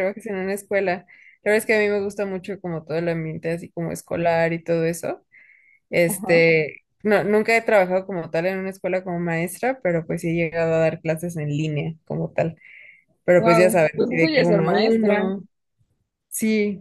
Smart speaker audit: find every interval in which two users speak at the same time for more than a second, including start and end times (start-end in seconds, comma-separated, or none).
13.4-15.3